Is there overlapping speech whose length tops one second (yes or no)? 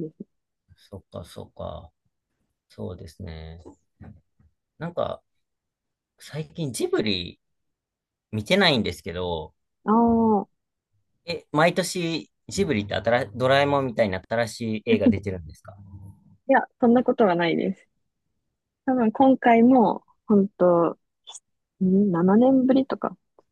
no